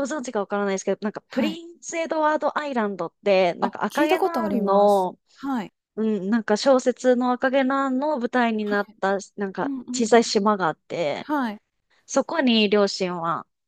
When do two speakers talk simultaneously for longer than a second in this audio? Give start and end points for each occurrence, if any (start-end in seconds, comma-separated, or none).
3.6-5.2